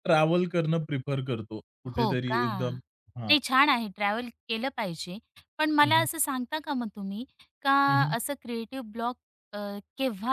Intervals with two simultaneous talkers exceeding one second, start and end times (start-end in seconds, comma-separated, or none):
none